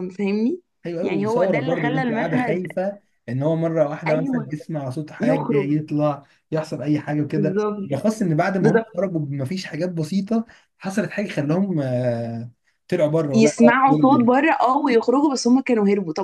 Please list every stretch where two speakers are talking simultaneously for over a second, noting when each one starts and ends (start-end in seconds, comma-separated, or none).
1.0-2.7